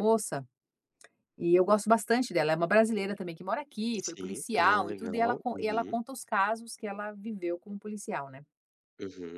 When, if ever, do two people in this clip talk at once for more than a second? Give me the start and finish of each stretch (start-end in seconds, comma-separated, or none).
4.0-6.0